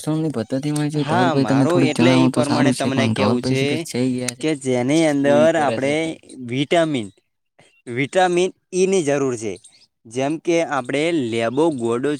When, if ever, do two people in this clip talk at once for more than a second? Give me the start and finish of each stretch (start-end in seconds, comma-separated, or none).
1.1-3.4